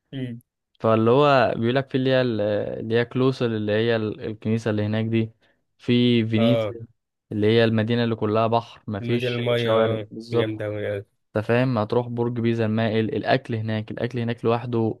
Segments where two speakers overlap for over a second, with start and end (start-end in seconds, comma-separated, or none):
9.0-10.7